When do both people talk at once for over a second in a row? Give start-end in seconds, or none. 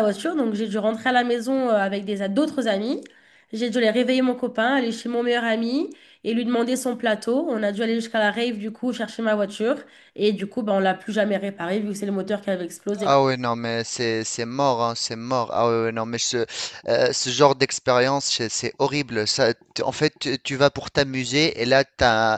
none